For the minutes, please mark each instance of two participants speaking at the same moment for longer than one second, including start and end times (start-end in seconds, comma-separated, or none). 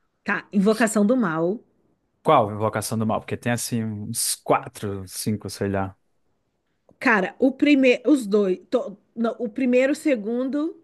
none